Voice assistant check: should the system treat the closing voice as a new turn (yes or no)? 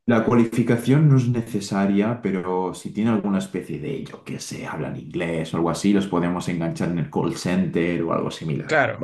yes